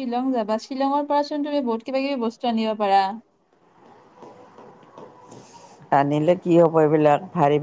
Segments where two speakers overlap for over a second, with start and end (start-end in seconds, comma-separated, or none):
none